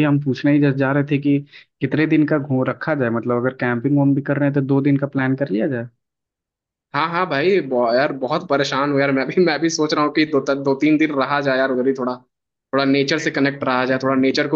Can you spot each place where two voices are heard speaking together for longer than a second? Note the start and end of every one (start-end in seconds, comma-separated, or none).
none